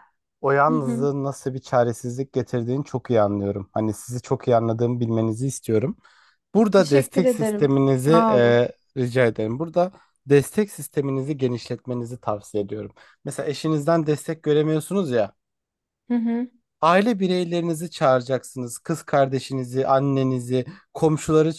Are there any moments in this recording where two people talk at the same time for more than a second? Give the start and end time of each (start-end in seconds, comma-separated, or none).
6.7-8.6